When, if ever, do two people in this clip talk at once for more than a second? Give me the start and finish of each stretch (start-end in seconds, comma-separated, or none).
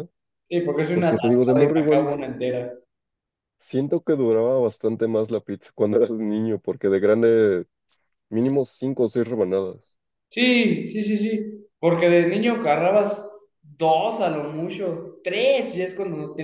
0.9-2.1